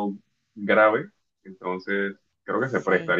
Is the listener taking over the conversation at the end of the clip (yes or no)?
no